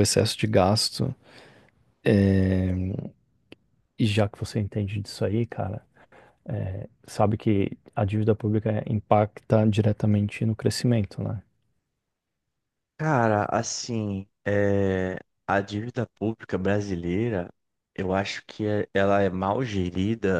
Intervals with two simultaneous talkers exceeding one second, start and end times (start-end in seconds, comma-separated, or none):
none